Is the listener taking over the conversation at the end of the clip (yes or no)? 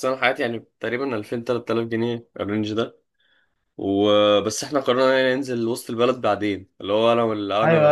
yes